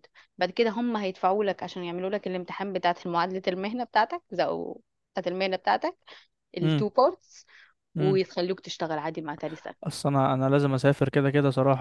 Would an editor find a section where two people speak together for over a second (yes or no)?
no